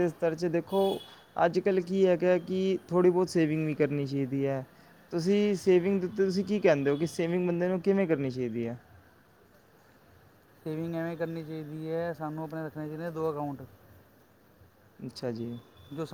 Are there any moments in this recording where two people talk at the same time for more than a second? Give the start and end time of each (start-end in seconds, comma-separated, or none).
none